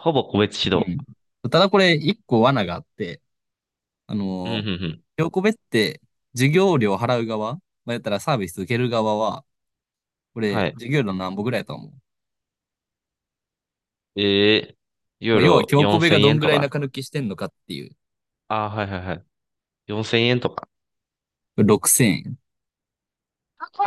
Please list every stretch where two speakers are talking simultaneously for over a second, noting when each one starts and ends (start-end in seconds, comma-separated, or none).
15.3-16.7